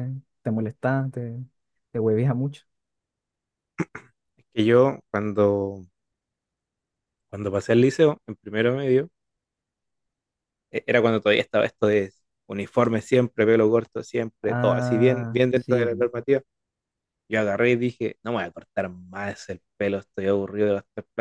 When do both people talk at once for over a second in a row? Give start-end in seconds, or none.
14.5-15.9